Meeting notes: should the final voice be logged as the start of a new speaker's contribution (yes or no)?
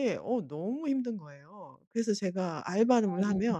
no